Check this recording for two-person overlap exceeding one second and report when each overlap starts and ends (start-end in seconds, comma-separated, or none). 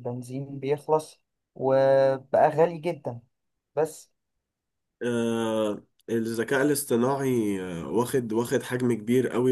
none